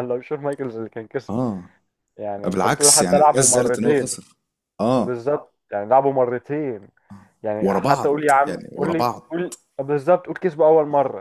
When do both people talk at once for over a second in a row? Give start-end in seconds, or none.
2.4-4.2, 7.6-9.4